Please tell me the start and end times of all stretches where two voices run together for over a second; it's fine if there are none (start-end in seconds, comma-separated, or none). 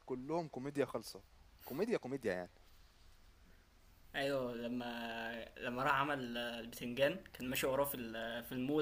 none